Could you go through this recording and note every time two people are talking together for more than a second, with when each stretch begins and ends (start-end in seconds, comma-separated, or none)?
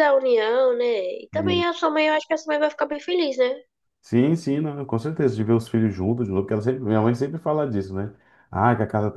none